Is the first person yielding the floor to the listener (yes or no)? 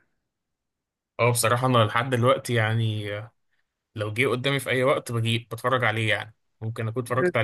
no